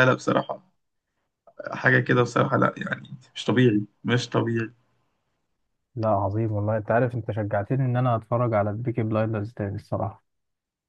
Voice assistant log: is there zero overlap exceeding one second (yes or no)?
yes